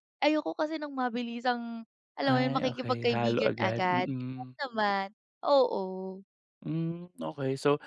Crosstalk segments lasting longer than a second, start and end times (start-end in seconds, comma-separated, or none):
2.3-4.5